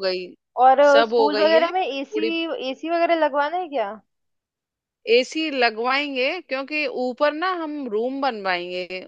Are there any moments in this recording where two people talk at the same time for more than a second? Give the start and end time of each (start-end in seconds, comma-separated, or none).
0.9-2.3